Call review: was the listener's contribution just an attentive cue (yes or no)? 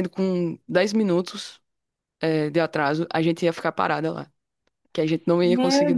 no